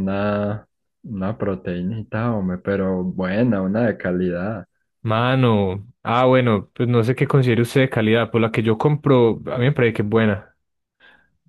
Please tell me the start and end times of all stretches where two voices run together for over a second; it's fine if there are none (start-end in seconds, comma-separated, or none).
none